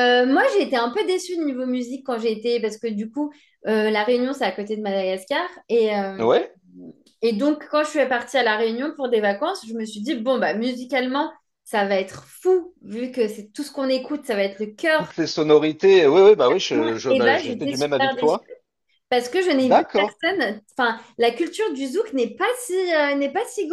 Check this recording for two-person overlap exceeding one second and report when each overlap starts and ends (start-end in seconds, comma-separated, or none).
17.1-18.4